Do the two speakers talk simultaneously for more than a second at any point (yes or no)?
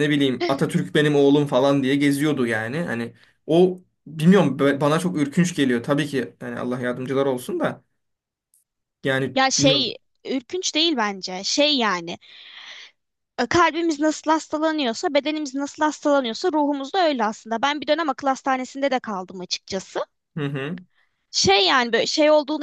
no